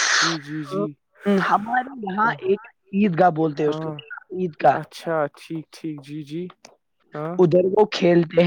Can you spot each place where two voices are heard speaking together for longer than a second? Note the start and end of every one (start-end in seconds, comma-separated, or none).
none